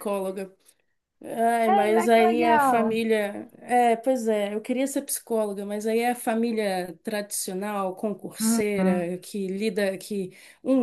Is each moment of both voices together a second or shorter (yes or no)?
no